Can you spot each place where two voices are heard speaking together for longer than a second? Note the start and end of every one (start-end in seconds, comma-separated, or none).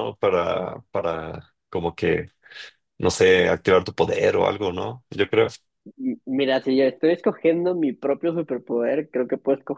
none